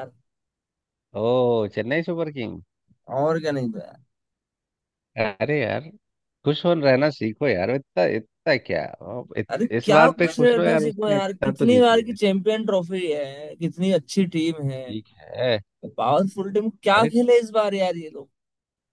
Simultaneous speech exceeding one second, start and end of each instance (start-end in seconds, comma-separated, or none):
9.5-12.1